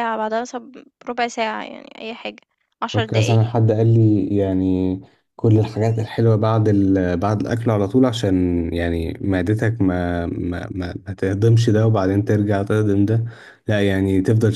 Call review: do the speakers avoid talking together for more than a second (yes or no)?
yes